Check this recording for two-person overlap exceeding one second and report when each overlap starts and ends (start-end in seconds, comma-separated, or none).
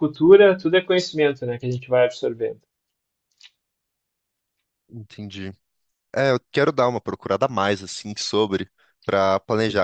none